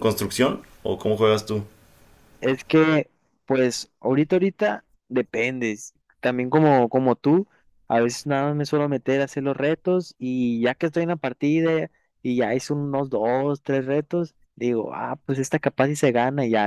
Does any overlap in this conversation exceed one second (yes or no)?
no